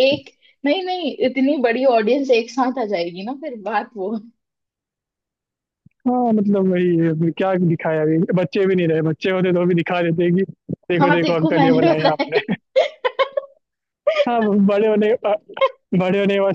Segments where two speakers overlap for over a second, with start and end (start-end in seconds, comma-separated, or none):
11.0-12.5